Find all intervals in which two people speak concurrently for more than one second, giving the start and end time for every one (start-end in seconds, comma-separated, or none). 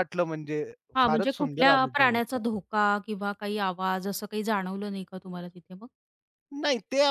1.0-2.4